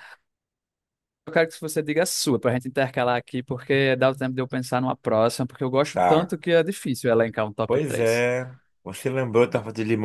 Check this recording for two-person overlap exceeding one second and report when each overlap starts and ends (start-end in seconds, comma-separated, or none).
none